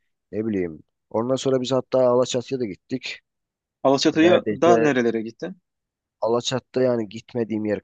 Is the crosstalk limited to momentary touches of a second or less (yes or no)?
yes